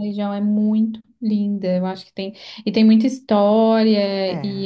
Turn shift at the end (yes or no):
no